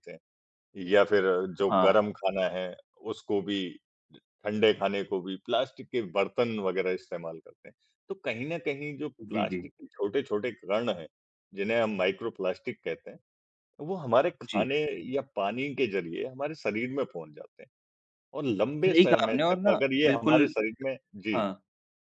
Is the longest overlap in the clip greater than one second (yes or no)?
yes